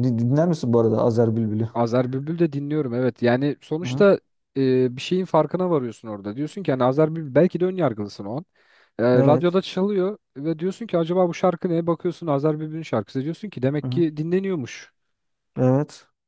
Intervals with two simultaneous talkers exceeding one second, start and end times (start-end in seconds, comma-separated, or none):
none